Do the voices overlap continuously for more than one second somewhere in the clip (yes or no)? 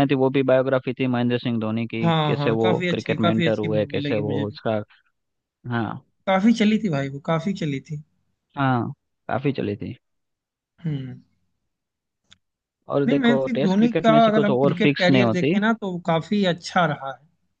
yes